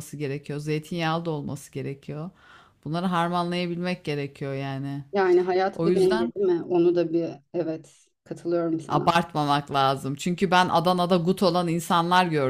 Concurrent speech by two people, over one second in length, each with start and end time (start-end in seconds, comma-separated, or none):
none